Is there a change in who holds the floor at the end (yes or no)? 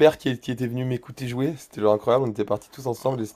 no